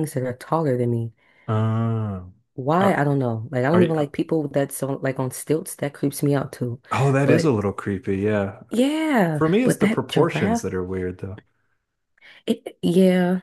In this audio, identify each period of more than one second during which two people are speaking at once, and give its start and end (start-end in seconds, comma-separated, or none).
9.3-10.7